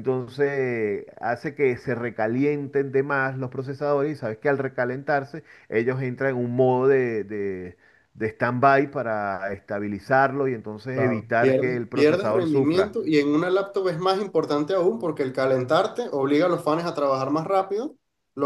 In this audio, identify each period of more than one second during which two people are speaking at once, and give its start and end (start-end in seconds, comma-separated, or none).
10.9-13.0